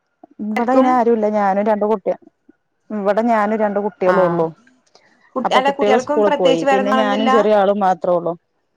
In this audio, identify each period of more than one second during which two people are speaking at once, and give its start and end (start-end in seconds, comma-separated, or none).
5.5-7.3